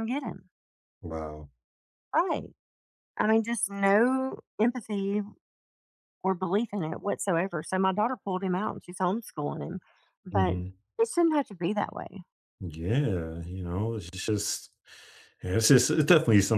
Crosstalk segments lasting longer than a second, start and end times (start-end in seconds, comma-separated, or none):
none